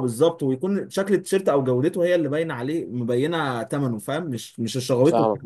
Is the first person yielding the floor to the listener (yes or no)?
yes